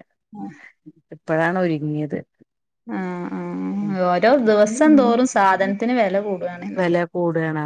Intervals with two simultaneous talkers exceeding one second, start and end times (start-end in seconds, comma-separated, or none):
none